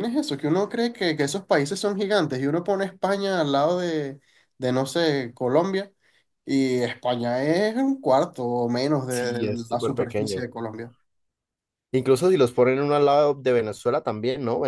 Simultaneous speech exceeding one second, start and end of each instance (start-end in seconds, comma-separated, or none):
9.1-10.4